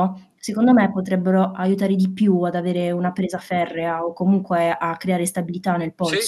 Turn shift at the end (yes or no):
yes